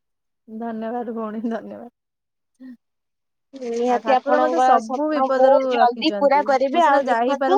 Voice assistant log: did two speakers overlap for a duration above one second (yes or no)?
yes